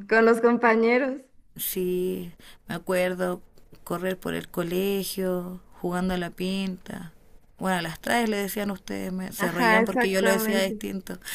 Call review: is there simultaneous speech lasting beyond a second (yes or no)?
yes